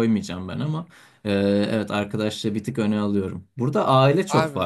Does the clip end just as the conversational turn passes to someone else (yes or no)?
no